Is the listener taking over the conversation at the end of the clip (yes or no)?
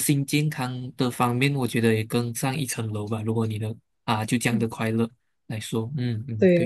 yes